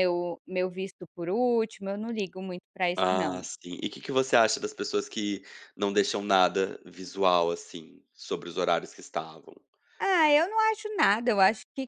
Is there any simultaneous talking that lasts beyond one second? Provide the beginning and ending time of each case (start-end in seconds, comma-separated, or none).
none